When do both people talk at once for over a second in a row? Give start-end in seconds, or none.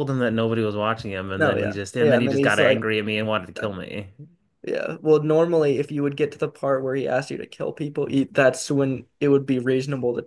1.4-2.8